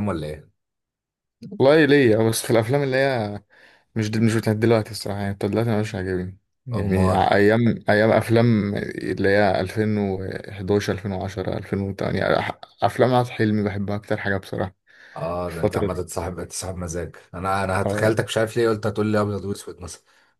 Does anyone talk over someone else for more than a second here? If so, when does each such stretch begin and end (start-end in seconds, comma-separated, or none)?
none